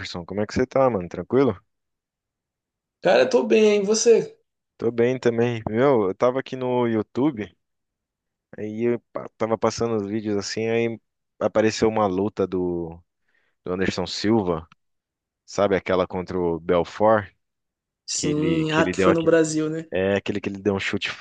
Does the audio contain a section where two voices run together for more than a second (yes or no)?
yes